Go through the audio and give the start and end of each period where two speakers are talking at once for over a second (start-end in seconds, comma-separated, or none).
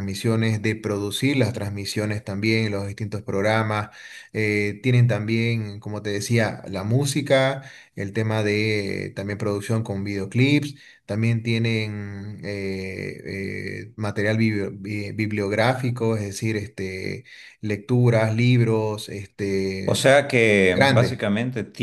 none